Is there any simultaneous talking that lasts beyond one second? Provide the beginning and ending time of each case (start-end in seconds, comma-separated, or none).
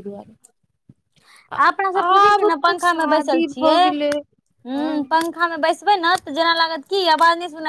2.1-3.8